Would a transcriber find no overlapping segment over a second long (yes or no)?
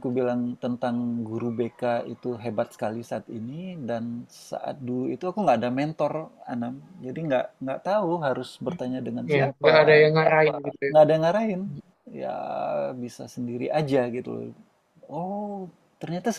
no